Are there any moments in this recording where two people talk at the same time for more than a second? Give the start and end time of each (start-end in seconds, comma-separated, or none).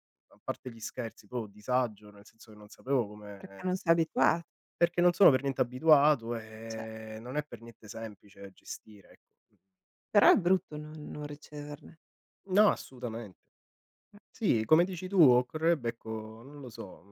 none